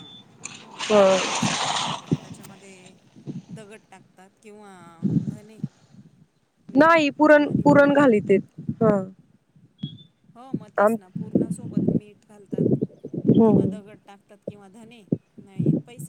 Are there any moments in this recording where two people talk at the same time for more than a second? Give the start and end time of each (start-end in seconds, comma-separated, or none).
none